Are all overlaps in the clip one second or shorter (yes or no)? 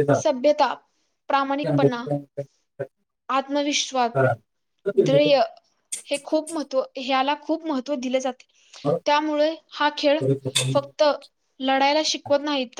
yes